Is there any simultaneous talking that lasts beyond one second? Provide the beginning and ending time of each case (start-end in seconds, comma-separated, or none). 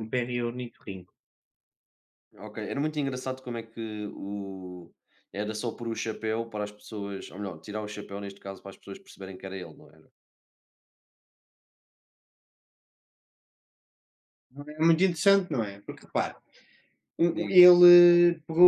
none